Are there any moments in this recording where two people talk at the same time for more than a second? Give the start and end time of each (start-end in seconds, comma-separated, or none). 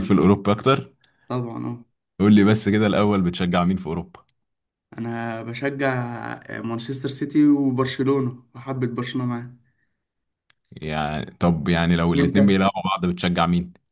none